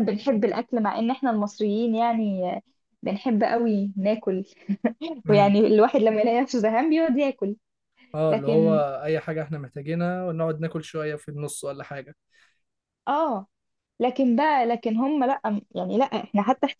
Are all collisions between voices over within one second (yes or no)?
yes